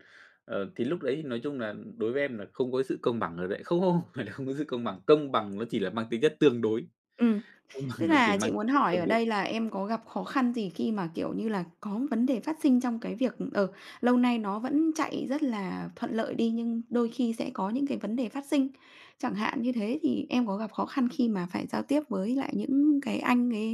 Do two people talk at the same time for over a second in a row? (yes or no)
yes